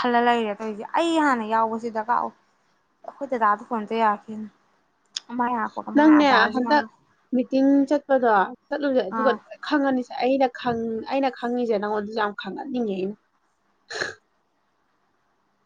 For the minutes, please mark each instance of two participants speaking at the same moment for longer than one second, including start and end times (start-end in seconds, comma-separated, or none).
none